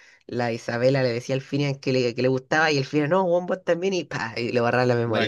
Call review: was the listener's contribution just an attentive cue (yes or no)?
no